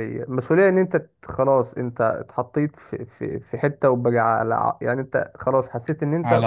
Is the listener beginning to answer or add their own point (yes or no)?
no